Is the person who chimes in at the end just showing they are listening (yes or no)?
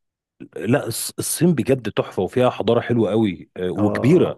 no